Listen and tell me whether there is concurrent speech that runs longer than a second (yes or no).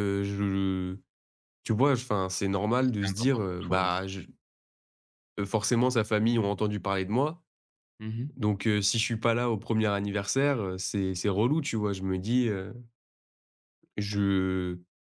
yes